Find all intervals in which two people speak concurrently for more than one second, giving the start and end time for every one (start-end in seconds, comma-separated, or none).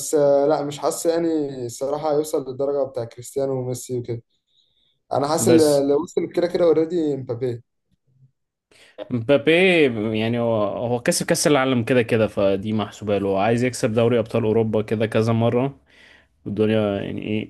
none